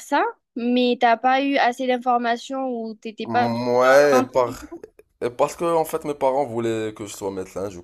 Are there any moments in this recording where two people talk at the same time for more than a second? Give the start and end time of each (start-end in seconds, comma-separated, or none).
3.3-4.6